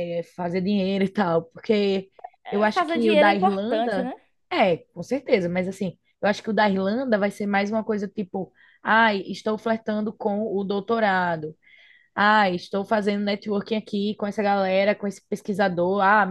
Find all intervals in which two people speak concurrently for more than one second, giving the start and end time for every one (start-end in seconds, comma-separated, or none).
2.5-4.1